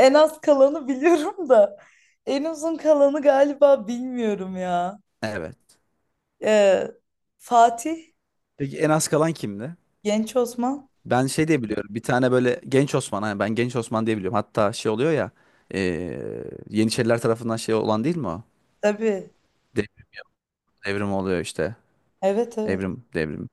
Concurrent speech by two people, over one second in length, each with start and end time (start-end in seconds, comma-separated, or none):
none